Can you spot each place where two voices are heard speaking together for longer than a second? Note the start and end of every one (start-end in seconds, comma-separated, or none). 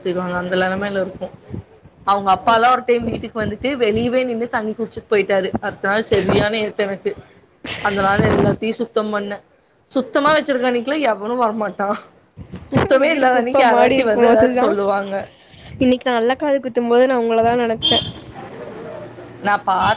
13.0-14.7